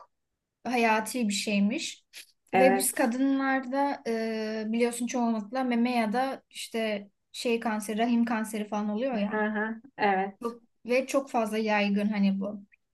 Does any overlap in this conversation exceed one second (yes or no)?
no